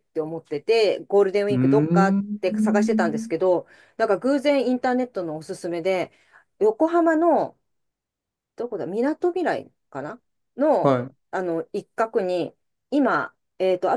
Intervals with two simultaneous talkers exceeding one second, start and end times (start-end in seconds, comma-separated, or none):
1.5-2.9